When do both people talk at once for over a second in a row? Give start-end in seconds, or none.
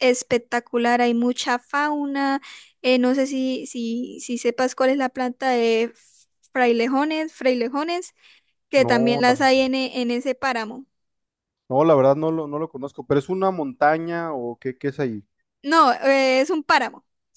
none